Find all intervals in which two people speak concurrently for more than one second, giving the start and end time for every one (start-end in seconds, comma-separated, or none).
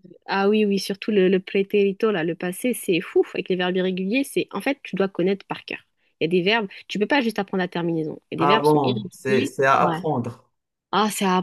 8.4-10.0